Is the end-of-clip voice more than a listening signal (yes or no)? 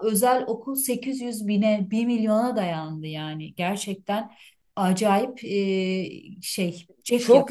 yes